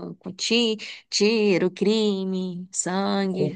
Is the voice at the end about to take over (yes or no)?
yes